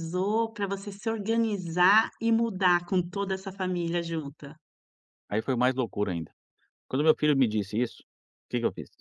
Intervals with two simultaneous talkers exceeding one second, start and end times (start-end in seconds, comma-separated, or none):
none